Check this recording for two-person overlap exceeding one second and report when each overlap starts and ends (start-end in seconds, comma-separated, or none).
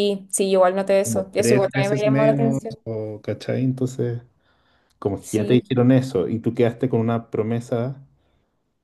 1.0-2.8